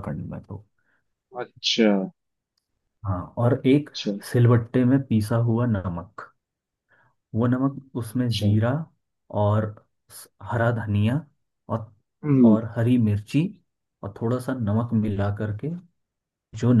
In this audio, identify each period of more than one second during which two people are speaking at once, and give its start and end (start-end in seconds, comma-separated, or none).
none